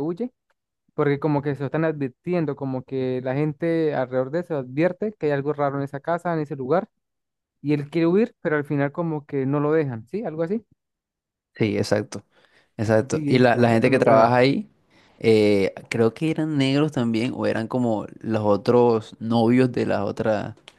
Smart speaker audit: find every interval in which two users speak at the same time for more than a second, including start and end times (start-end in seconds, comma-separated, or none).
13.1-14.3